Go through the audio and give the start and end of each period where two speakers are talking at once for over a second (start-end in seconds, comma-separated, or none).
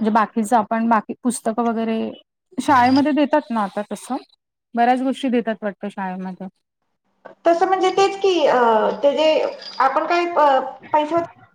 none